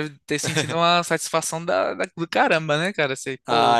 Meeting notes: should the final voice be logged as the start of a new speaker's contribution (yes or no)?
yes